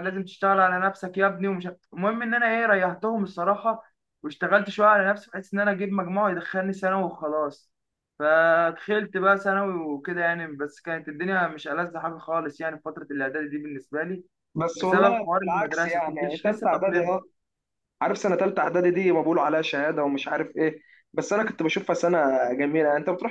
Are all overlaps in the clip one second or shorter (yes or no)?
no